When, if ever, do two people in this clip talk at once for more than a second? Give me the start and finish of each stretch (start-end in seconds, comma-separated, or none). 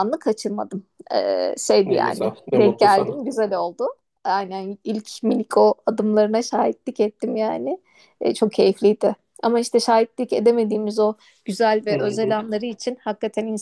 1.8-3.2